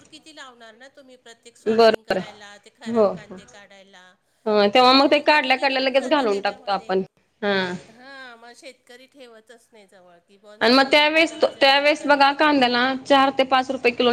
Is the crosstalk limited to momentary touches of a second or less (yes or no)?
no